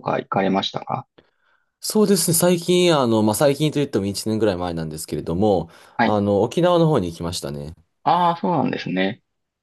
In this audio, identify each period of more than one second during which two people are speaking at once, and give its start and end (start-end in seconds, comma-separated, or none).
none